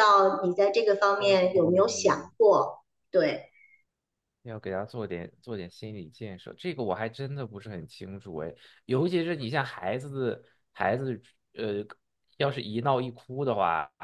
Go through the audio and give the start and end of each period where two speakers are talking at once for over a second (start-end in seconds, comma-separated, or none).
none